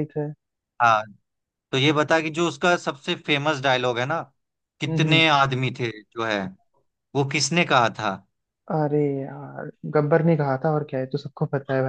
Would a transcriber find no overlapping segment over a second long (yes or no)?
yes